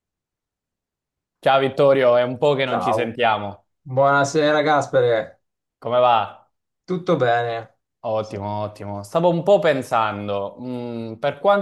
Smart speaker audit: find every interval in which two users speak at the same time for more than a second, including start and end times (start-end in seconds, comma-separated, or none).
none